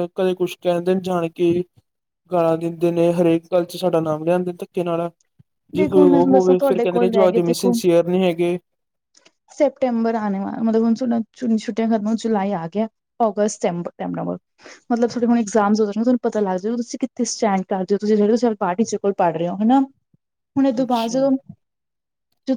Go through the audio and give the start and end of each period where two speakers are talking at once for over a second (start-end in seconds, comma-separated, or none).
5.8-7.7